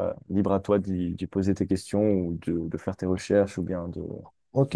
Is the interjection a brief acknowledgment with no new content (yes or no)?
no